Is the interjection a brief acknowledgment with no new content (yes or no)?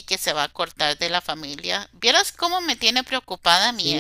no